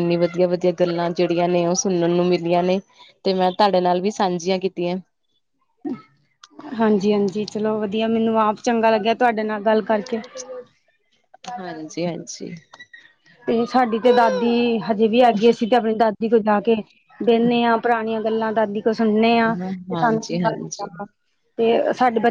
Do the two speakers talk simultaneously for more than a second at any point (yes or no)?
yes